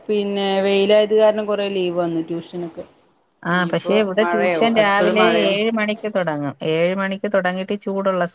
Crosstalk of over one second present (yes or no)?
yes